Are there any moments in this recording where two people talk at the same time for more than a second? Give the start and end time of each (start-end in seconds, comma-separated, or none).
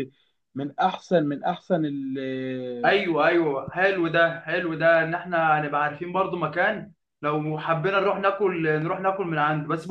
none